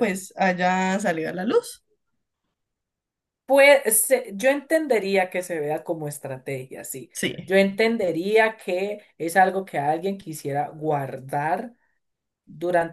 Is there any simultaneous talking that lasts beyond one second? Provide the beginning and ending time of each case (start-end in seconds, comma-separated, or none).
none